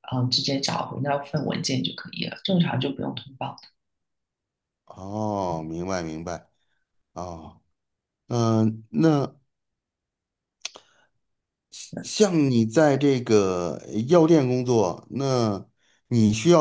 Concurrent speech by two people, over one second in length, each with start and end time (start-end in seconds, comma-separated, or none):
none